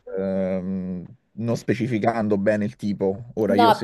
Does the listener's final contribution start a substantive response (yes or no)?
yes